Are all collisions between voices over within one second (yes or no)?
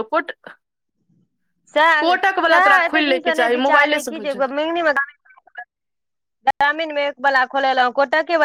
no